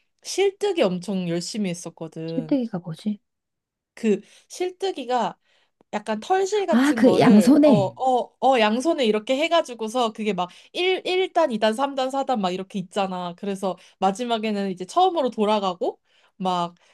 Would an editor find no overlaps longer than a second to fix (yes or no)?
no